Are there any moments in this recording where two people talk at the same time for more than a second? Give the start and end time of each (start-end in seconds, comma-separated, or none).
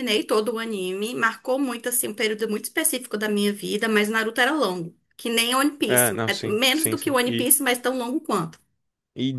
5.8-7.5